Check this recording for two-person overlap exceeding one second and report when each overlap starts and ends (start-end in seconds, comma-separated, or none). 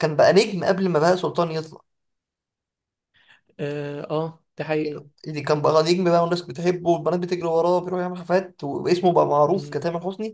none